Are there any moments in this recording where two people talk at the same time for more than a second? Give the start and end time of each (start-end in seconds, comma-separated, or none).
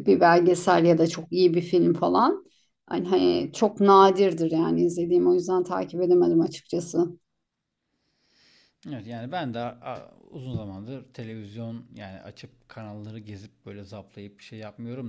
none